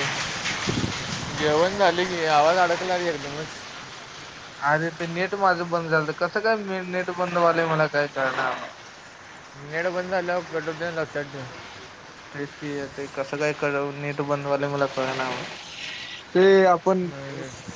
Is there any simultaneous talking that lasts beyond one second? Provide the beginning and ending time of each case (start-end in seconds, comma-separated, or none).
none